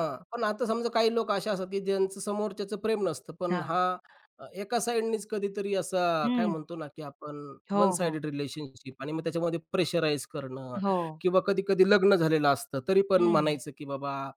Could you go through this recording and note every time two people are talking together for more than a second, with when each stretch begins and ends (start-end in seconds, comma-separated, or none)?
none